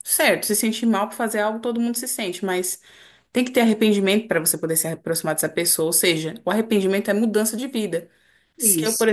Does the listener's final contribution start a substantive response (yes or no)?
no